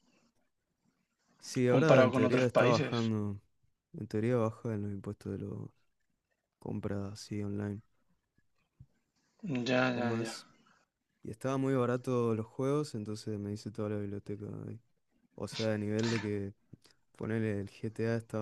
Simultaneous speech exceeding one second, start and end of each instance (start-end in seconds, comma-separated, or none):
1.7-3.0